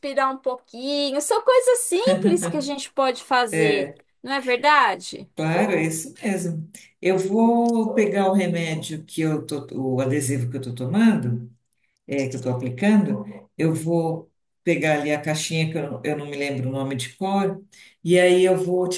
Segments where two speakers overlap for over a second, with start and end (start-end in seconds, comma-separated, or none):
none